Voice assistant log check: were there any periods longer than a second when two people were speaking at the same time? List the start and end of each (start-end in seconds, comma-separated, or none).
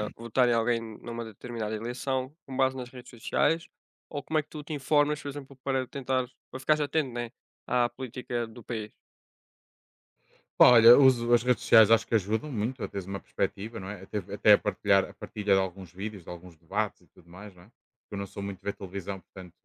none